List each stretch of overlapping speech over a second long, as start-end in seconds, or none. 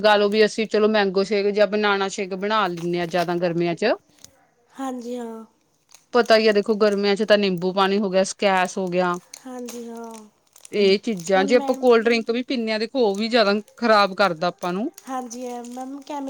none